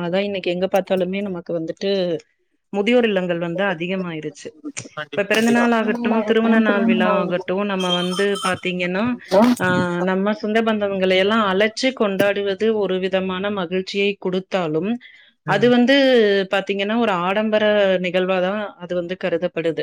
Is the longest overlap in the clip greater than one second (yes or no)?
yes